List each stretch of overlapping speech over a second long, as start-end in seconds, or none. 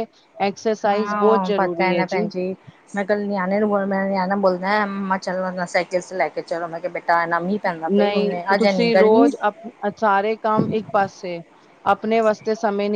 0.9-2.2, 7.9-9.3